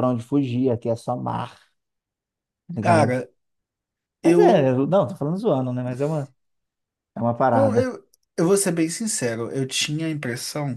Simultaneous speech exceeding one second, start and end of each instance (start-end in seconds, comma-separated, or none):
none